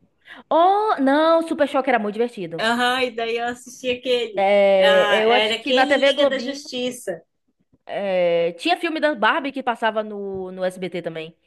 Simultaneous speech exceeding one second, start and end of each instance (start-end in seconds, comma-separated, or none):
4.3-6.6